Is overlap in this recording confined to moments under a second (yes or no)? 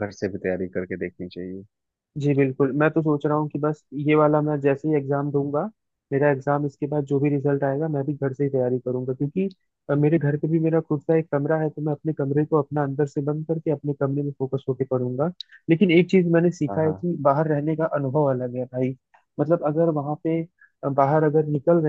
yes